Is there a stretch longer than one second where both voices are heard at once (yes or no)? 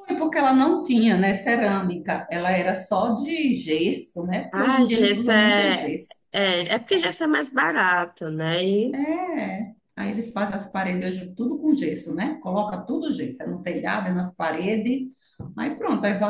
yes